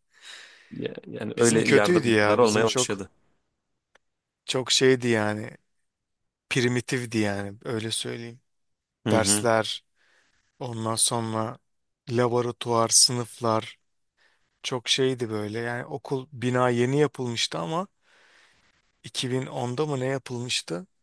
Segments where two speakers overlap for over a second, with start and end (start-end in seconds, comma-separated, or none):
1.4-3.0